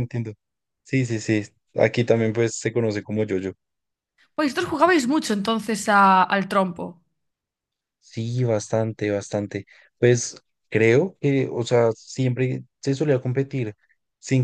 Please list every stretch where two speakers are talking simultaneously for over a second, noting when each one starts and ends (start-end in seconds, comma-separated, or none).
none